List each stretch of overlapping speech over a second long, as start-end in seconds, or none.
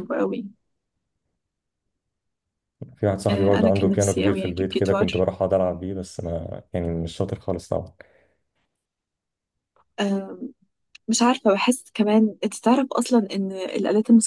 3.3-5.2